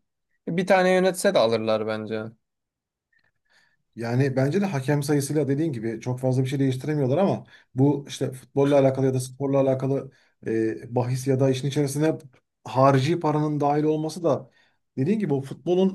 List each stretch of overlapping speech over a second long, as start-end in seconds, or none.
none